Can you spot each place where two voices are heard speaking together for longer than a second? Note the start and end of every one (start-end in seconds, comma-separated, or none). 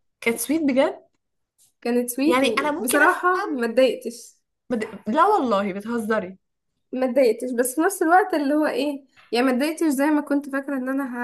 2.3-3.6